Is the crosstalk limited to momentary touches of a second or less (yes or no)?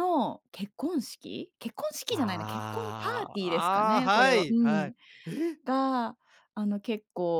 no